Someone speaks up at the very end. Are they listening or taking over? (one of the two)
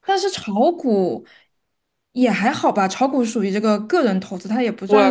taking over